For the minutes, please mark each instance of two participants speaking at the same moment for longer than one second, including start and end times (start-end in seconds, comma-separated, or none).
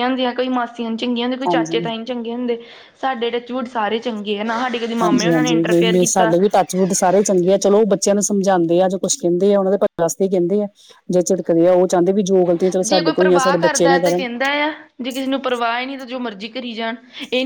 5.0-6.3